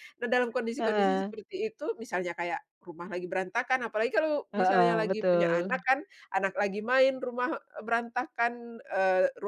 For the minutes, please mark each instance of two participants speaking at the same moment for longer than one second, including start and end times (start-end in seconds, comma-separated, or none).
4.5-5.9